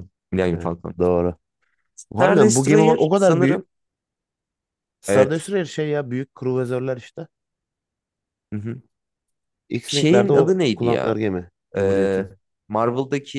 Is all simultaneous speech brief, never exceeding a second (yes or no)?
no